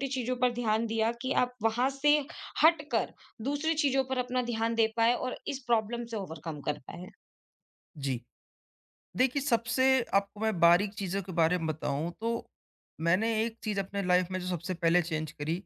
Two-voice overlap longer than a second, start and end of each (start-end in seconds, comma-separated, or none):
none